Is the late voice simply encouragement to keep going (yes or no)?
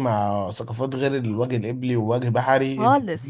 yes